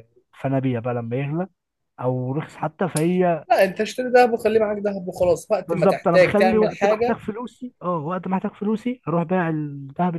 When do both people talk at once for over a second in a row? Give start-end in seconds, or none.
5.7-7.2